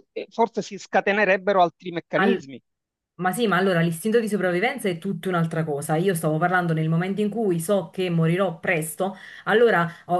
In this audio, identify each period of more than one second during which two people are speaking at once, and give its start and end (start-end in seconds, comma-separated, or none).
none